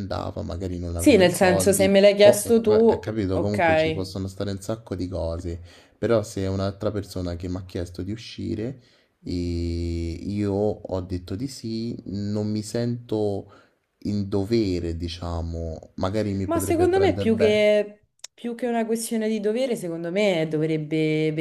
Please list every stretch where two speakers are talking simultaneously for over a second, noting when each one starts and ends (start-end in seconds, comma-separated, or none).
0.9-4.1, 16.4-17.7